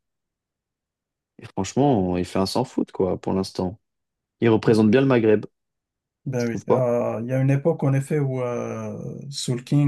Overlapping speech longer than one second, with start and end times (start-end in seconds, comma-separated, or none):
none